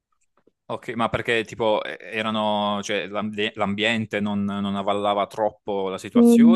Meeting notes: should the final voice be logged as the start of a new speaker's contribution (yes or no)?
yes